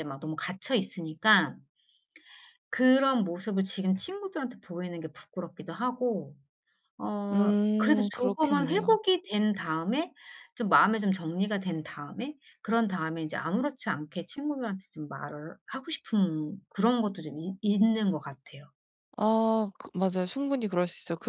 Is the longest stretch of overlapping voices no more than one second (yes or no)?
no